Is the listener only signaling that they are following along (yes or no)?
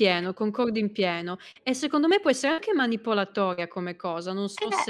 no